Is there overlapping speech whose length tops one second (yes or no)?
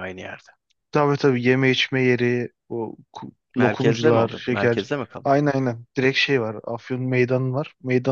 yes